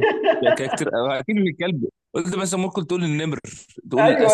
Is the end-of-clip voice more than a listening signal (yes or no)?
yes